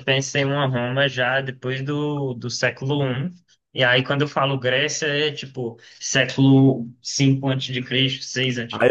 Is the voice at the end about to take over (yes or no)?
yes